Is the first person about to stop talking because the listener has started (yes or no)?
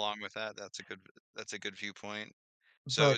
no